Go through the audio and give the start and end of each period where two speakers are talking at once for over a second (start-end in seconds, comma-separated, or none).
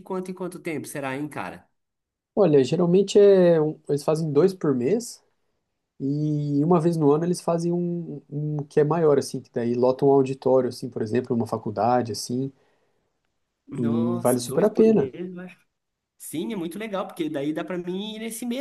13.7-15.1